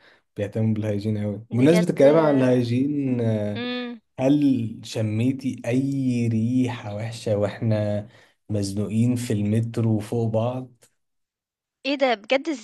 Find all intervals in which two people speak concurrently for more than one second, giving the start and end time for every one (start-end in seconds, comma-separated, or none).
none